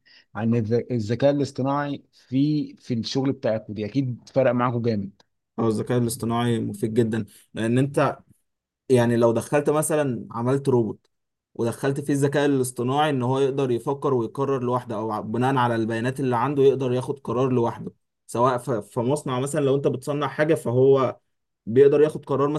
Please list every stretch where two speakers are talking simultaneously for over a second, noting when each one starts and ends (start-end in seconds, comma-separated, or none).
none